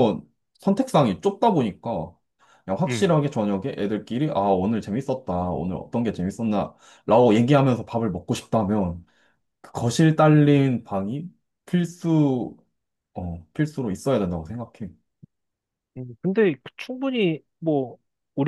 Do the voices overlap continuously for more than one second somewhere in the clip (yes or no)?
no